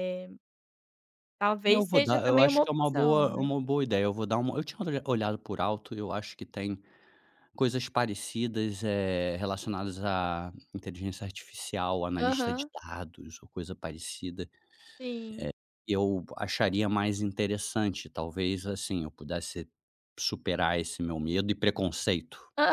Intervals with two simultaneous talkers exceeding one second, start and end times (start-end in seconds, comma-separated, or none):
1.6-3.5